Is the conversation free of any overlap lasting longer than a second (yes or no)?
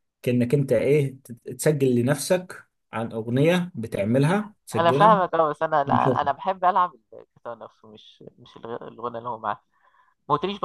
yes